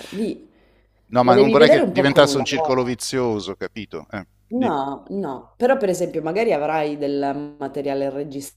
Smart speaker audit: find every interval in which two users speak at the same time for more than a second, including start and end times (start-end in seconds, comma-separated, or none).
1.2-2.8